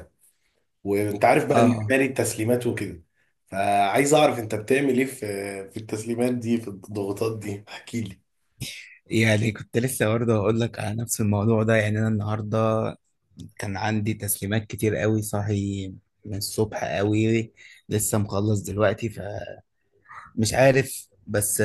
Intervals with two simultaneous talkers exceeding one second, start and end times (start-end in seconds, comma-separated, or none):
none